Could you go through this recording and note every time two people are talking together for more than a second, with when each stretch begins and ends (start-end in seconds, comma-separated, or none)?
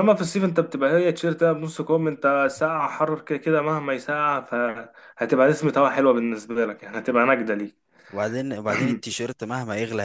none